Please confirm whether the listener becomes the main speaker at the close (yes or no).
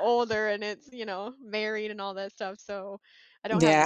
yes